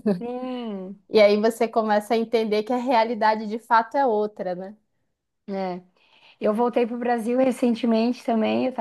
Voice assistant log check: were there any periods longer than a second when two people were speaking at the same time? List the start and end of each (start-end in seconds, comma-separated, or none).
none